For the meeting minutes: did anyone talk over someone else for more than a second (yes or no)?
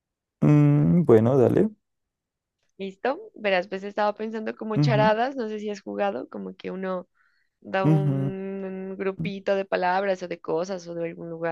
no